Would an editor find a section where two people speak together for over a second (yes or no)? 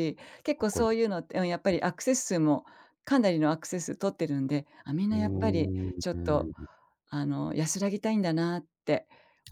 yes